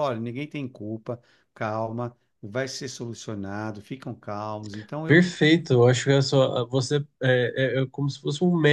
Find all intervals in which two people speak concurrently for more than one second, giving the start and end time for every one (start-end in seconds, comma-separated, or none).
none